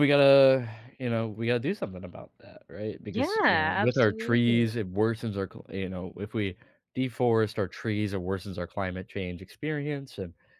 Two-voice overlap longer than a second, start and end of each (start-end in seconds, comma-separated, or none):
3.1-4.8